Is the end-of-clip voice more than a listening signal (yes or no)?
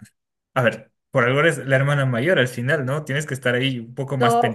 yes